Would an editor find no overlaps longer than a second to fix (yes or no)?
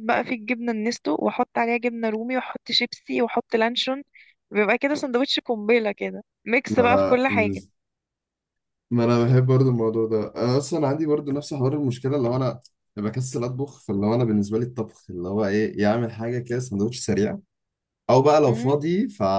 yes